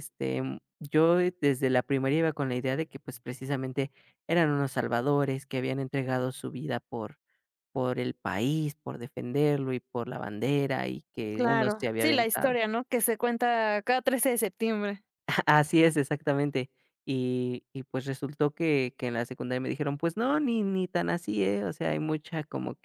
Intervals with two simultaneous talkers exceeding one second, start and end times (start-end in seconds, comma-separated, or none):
11.3-12.6